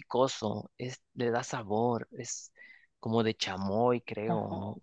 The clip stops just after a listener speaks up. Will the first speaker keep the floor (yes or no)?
no